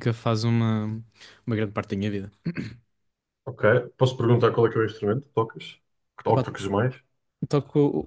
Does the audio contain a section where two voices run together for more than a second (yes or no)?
no